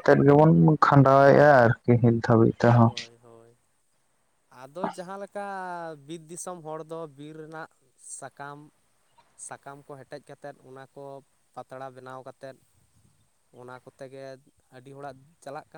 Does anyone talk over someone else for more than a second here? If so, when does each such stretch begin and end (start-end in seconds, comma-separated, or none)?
none